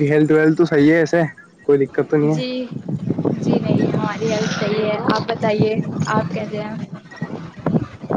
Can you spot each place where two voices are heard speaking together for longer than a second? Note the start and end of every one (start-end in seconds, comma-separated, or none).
none